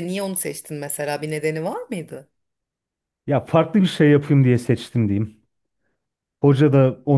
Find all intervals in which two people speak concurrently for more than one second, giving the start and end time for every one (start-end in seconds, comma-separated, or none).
none